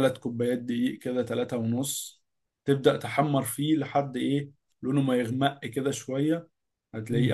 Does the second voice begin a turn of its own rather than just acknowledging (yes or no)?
no